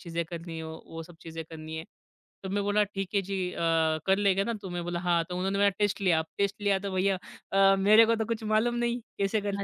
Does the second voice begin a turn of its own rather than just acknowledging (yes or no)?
no